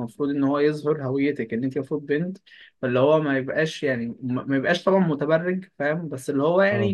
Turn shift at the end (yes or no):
no